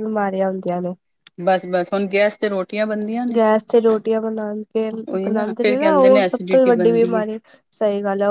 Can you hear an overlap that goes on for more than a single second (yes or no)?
yes